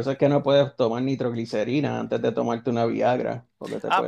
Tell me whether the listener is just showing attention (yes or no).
no